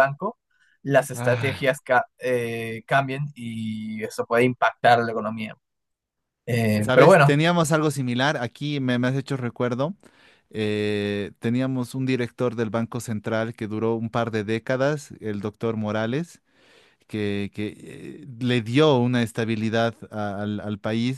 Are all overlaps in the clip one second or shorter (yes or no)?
yes